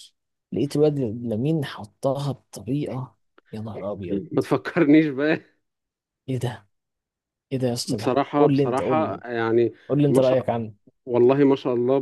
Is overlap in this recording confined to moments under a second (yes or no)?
no